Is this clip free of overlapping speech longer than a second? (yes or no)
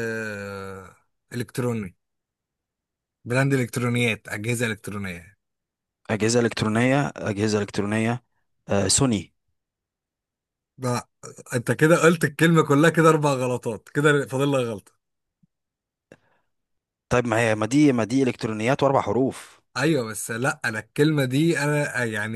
yes